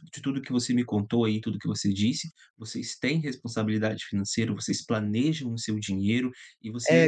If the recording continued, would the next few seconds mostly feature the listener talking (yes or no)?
yes